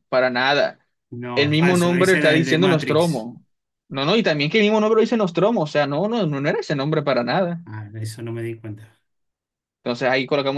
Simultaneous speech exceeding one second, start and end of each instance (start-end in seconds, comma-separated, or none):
1.3-3.3